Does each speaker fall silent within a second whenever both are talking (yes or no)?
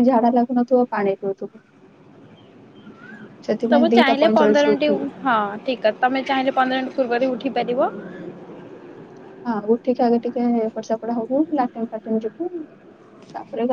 no